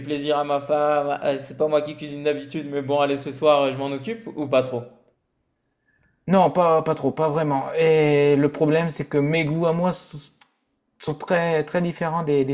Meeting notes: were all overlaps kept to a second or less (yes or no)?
yes